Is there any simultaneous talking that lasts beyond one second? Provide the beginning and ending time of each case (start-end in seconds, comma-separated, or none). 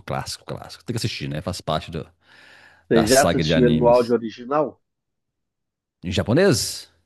2.9-4.1